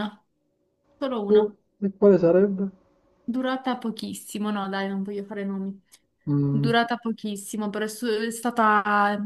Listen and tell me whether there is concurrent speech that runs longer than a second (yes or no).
no